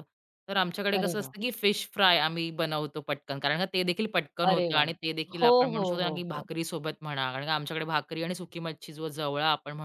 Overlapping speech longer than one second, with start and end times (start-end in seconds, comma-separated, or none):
4.5-6.5